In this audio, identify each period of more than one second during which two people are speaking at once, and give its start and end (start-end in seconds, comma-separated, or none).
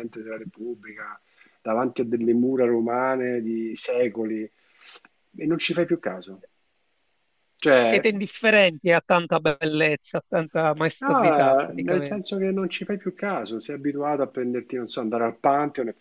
11.0-12.2